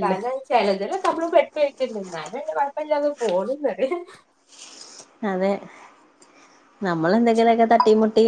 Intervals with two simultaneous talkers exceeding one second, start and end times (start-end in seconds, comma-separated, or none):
none